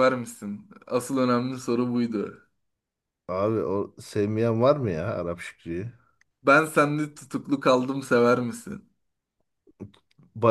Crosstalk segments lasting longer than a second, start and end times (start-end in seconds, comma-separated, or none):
none